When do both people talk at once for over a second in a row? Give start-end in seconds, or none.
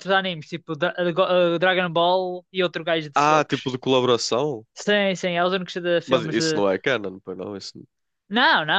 none